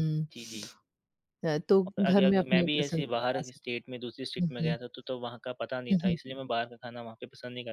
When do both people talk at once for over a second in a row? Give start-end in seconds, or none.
1.9-3.8